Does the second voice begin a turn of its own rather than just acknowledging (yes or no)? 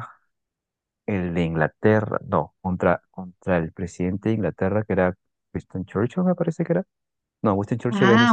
no